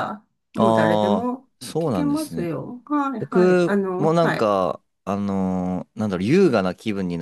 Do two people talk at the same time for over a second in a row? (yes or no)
yes